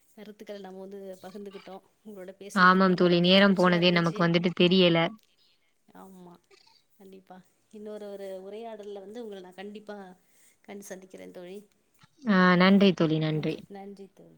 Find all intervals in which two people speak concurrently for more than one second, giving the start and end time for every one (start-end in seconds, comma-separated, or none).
2.7-4.2